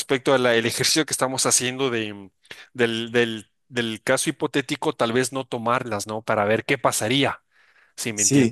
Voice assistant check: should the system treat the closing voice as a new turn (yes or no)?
yes